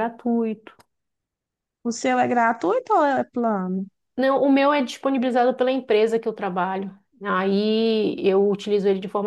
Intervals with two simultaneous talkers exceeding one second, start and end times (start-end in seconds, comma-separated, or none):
none